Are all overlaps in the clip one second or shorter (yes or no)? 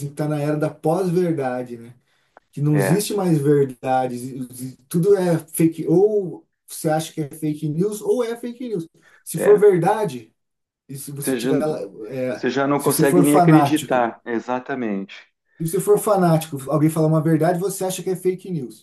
no